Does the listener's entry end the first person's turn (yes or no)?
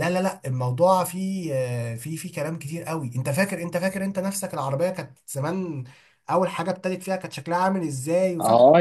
yes